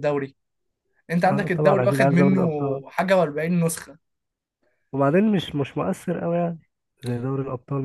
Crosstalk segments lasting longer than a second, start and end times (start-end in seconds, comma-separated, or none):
1.2-2.5